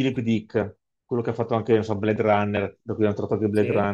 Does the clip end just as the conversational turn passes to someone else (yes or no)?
no